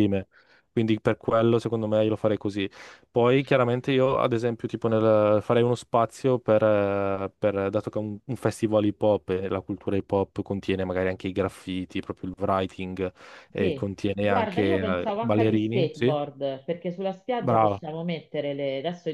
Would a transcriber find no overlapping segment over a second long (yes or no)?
no